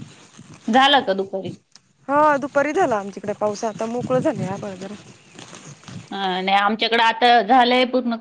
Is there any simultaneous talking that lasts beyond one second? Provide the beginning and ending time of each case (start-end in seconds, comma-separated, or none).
none